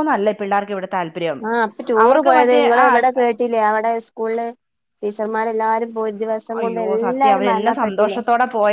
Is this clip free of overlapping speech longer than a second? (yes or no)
no